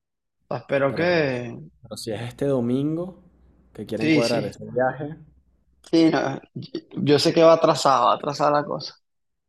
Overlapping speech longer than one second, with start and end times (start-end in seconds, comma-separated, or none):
none